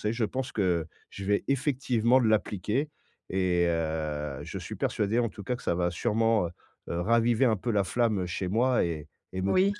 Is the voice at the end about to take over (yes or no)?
no